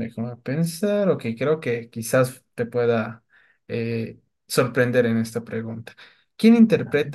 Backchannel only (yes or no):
yes